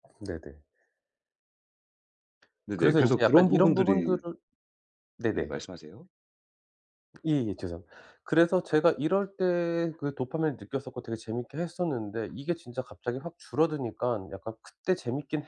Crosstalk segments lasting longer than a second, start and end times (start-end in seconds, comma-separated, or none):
2.8-4.2